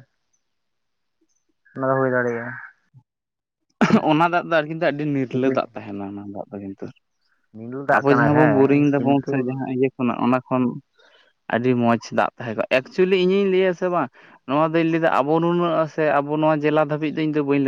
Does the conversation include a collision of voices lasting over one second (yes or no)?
yes